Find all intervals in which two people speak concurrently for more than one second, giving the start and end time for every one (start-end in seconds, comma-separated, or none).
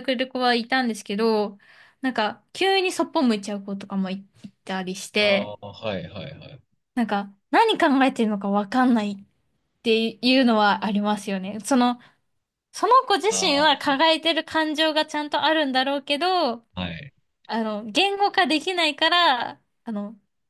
none